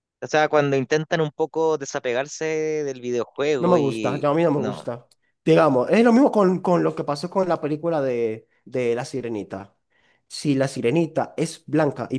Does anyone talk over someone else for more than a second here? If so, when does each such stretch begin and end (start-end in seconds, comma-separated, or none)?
3.6-4.9